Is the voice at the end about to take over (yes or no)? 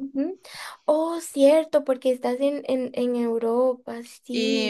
yes